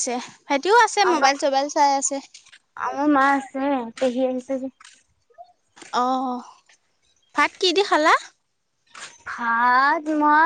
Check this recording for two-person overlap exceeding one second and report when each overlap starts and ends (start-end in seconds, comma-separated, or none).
none